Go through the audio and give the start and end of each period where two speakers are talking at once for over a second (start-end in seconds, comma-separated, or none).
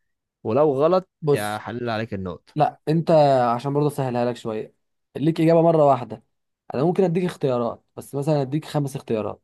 none